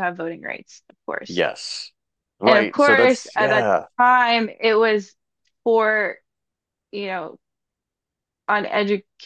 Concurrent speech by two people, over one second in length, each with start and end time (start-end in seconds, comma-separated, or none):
2.4-3.9